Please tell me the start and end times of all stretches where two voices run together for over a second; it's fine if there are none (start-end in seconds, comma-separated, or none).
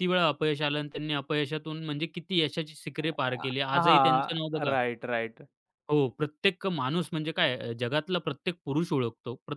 3.0-4.8